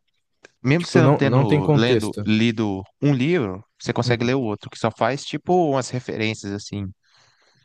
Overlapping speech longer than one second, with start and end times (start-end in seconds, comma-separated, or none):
0.8-2.3